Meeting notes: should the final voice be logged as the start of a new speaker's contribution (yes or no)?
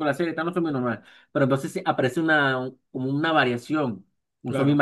no